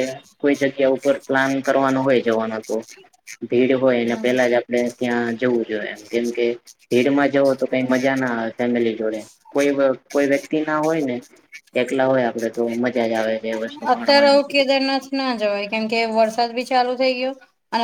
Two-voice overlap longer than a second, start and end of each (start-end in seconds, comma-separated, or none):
none